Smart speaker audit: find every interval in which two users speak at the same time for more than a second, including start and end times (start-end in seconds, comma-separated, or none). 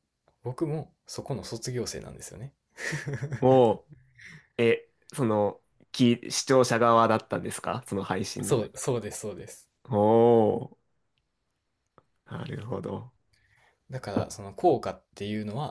none